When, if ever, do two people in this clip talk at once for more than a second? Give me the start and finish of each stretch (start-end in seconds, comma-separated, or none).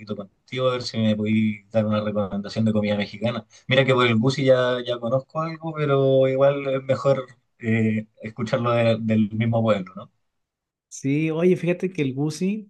none